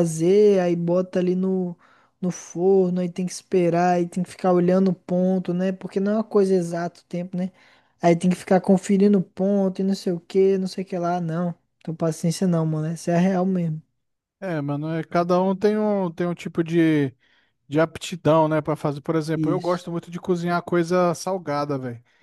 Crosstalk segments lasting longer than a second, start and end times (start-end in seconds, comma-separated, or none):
none